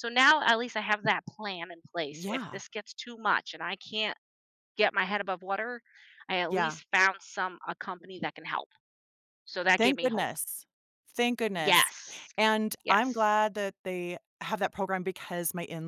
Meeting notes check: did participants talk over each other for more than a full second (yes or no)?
no